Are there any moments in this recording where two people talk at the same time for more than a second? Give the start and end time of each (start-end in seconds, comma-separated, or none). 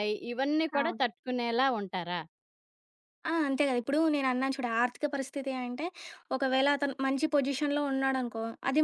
none